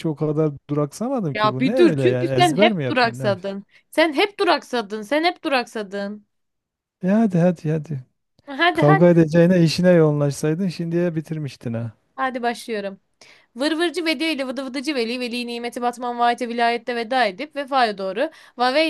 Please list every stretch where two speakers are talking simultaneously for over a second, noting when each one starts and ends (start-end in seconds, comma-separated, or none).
1.3-3.5